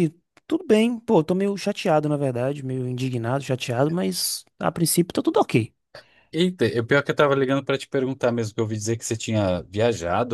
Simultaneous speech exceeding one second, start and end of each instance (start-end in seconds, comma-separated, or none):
none